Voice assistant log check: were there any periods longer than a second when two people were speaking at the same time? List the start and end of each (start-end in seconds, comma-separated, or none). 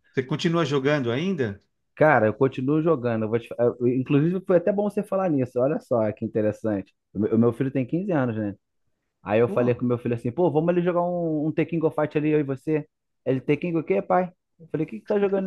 none